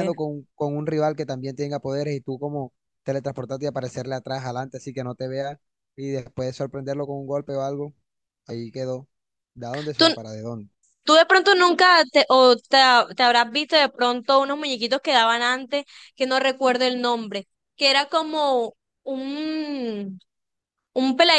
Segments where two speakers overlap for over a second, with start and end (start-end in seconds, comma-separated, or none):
none